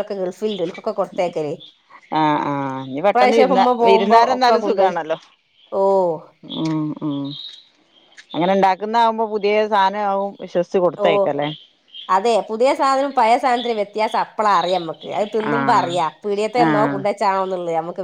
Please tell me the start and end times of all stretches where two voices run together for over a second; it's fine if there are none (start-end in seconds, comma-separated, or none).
3.1-4.9